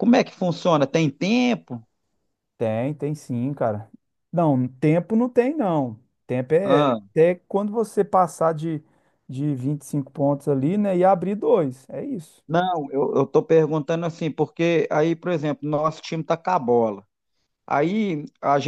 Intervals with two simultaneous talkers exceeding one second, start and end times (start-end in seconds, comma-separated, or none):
none